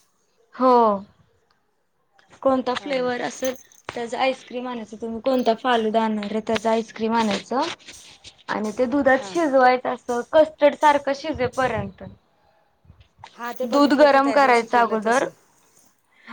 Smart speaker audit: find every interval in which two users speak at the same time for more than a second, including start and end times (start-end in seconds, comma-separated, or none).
13.7-15.3